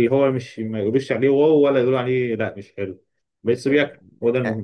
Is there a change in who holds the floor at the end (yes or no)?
yes